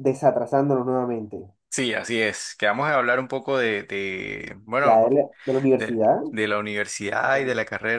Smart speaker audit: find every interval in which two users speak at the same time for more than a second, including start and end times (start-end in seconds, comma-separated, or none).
none